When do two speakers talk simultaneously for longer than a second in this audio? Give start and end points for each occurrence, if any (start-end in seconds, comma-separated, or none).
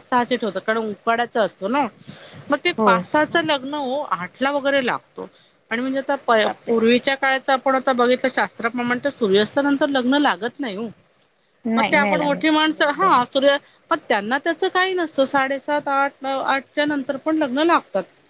11.8-13.2